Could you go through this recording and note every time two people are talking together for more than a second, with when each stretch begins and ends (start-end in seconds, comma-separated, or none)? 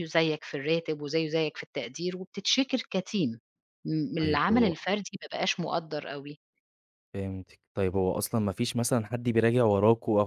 none